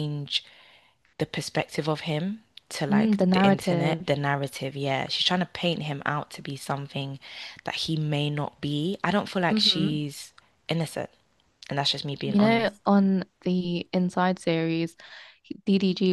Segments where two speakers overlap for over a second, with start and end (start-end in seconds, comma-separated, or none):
2.9-4.1